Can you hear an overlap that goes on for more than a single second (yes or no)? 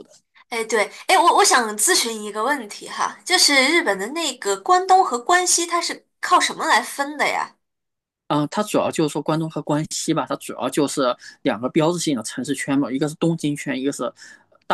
no